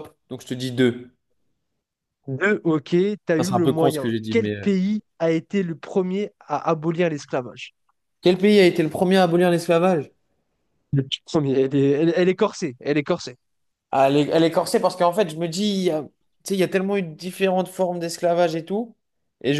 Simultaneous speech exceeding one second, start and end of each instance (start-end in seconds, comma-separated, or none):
3.4-4.7